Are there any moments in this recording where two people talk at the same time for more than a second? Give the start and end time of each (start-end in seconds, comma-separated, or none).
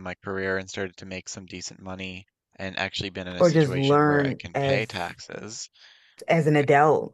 3.4-5.2